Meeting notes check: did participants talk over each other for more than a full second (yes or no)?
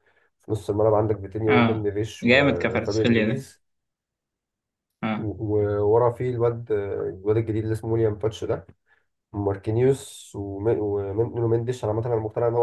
yes